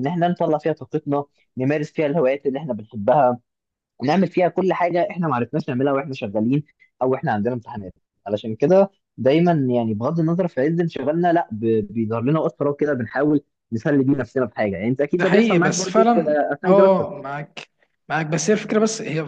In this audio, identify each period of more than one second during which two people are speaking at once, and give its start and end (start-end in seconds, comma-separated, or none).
15.1-17.1